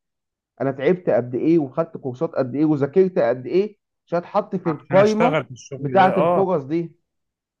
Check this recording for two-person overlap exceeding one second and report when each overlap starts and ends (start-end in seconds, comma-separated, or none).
4.7-6.5